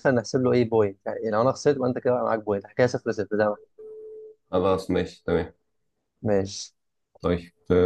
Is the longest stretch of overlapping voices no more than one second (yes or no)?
yes